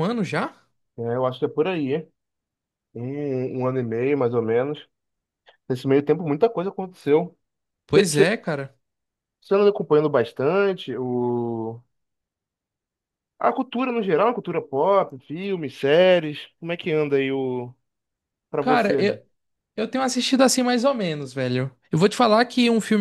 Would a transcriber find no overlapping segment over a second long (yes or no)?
yes